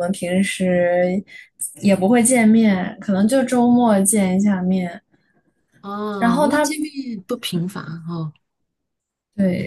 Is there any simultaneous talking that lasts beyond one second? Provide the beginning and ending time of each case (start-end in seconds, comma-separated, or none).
none